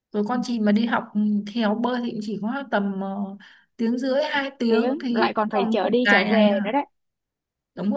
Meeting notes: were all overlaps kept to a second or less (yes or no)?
no